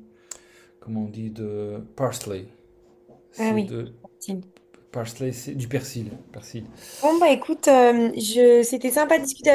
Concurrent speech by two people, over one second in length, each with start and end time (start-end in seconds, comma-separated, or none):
none